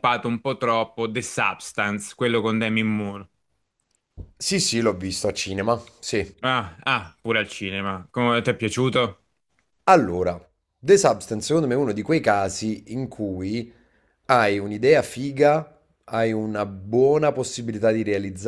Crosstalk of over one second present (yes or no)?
no